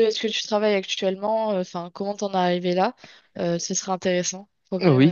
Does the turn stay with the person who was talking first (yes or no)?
no